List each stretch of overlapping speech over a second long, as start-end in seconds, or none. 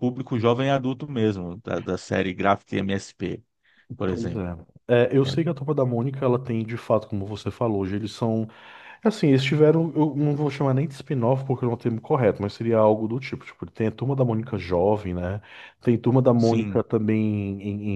none